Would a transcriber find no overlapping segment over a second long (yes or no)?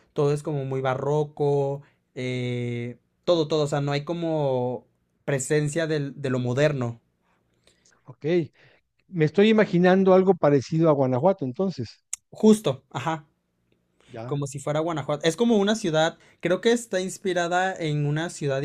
yes